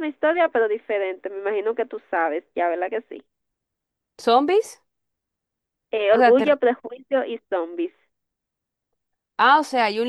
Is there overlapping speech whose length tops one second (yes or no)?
no